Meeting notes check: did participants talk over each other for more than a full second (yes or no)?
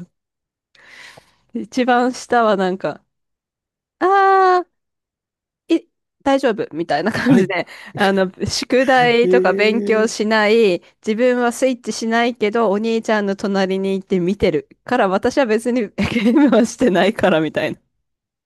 yes